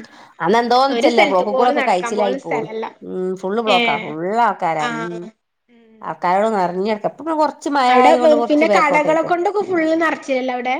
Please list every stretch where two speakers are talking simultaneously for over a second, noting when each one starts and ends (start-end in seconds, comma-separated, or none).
0.9-2.7